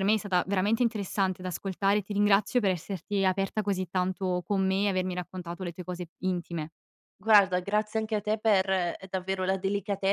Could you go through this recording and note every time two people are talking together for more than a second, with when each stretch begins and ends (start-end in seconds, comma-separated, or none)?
none